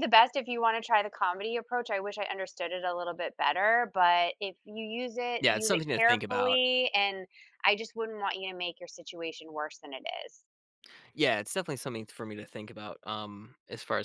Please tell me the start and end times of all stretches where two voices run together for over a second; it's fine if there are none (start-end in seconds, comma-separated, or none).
5.4-6.6